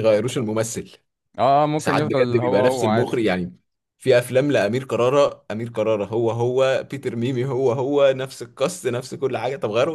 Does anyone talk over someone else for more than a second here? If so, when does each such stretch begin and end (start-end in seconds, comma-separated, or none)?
1.8-3.1